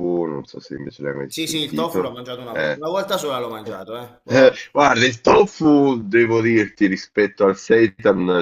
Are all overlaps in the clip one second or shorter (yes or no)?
no